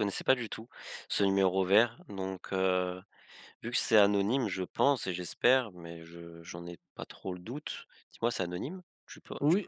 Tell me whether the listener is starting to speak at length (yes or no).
yes